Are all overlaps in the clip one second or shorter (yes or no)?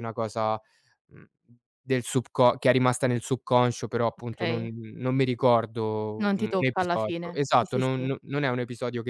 no